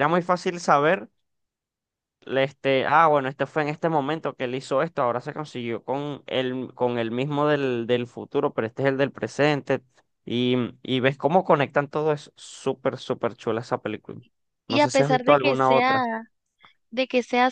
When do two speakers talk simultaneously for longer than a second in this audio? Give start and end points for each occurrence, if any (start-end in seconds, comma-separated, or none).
14.7-16.1